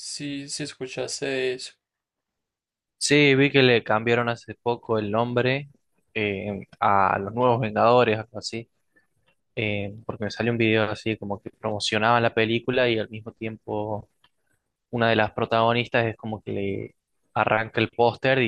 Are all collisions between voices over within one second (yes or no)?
yes